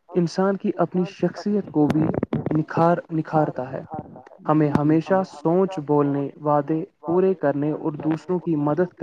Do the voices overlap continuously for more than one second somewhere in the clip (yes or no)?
no